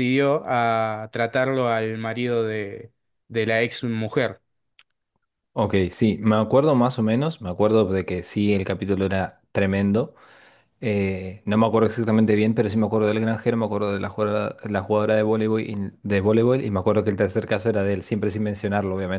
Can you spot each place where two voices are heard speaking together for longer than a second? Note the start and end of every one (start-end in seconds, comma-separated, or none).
none